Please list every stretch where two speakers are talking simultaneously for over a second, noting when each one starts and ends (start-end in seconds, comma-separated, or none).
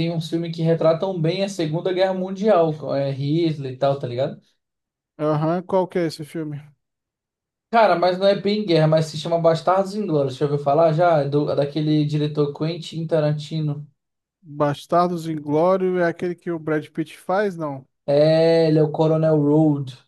none